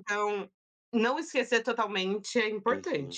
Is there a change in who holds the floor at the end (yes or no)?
yes